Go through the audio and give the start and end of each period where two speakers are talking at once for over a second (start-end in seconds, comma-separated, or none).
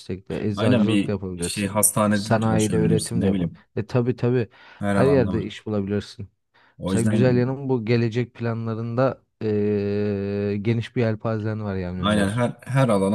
0.6-3.6